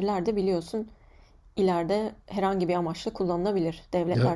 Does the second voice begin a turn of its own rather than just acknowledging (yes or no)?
yes